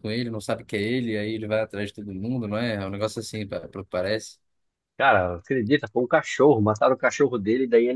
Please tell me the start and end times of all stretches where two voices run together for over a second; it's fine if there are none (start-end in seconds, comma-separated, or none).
none